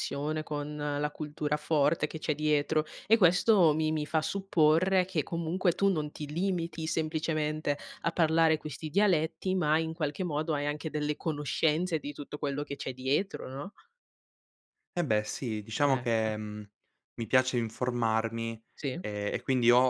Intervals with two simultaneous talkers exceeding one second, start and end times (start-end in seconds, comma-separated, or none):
none